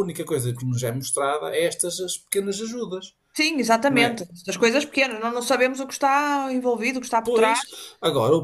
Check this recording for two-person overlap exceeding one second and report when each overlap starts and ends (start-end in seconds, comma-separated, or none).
none